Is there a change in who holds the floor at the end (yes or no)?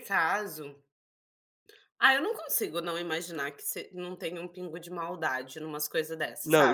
yes